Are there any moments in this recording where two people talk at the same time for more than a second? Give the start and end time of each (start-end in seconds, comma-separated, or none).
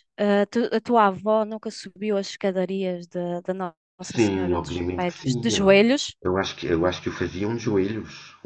4.1-5.7